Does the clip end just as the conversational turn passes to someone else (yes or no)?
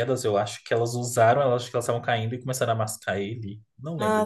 yes